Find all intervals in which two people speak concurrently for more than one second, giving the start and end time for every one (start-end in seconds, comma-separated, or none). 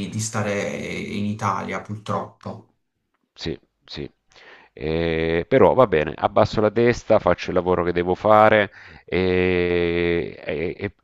none